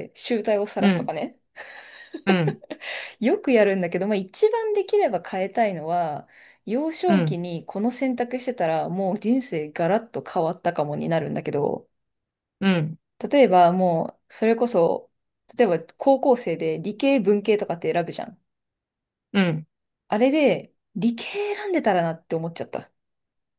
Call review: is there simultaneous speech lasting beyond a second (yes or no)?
no